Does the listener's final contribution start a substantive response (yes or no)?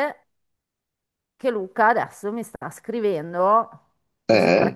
no